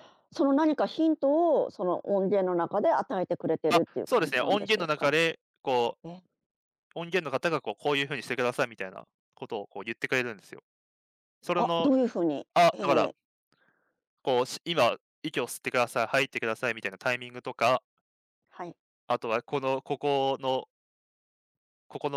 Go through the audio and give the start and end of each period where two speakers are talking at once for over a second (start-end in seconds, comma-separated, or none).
3.7-5.2